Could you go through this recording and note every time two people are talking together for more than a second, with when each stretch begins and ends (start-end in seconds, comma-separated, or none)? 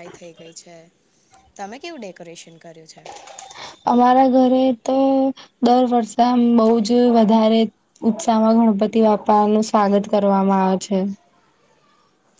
none